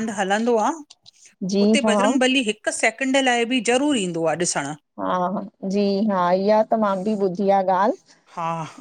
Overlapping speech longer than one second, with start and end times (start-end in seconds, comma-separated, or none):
none